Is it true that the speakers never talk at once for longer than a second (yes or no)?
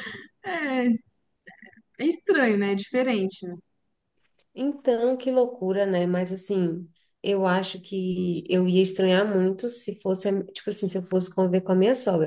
yes